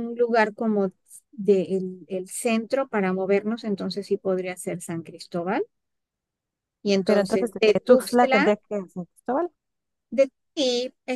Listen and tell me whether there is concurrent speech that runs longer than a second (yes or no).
yes